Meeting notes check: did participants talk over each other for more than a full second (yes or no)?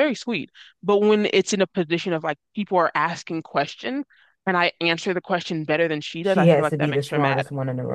yes